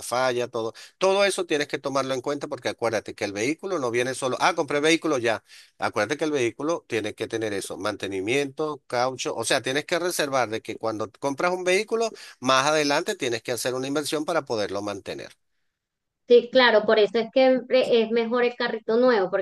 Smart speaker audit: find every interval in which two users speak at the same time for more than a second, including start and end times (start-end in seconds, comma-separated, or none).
none